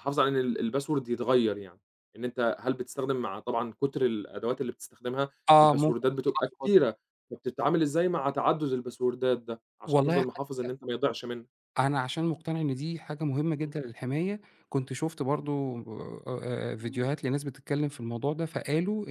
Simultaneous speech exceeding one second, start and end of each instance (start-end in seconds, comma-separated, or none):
5.5-6.7